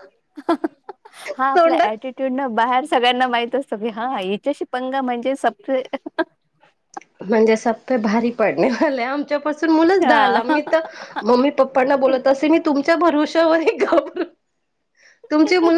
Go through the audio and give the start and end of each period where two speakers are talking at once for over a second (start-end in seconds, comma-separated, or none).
none